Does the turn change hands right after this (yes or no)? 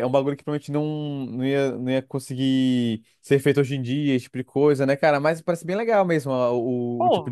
yes